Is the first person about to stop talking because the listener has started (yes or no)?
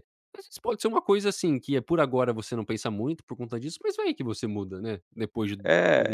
yes